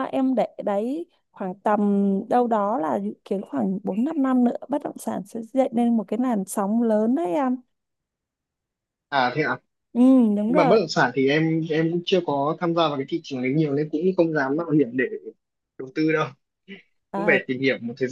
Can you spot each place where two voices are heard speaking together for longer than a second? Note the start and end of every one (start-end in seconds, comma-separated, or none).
none